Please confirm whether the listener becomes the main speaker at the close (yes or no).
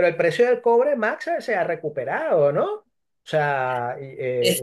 yes